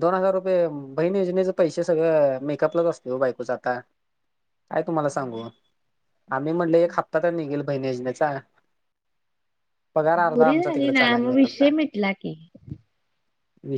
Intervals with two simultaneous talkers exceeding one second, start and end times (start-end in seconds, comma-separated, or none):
10.3-11.7